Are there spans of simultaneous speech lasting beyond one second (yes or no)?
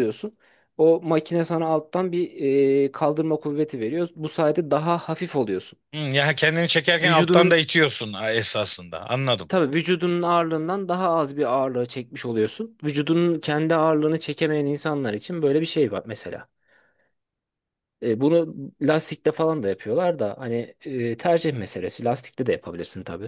no